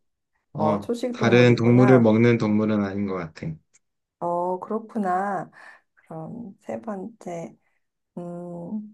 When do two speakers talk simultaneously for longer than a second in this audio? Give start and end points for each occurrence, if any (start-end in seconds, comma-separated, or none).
0.6-2.1